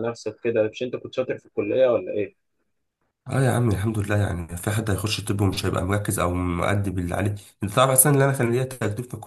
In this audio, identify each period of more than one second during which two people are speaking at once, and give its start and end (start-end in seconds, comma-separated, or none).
none